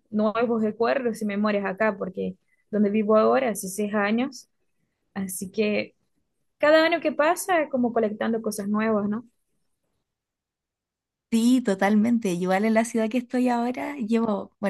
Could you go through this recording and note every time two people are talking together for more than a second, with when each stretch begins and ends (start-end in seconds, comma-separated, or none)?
none